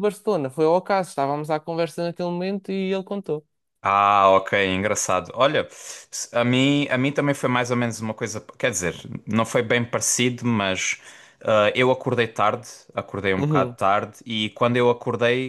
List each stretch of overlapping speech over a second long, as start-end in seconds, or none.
none